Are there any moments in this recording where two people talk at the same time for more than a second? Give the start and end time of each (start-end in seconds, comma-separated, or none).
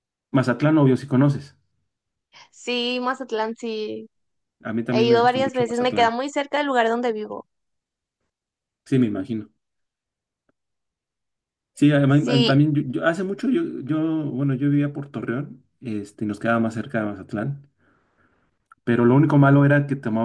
4.9-6.2